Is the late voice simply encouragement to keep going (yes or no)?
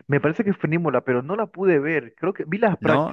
yes